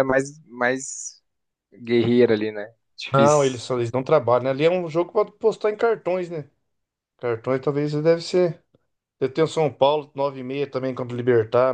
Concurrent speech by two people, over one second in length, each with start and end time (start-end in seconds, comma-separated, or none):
none